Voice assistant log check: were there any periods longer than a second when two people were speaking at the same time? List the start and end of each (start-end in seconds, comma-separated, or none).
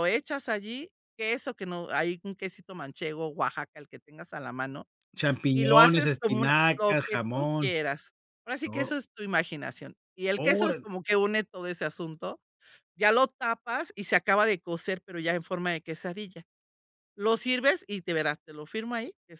5.5-7.7